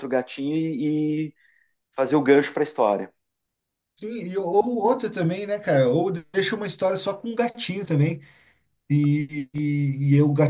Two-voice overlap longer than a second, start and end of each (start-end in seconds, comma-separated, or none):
none